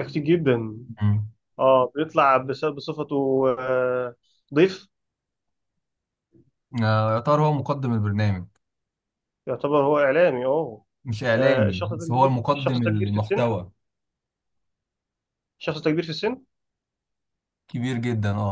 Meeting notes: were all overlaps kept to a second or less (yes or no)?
no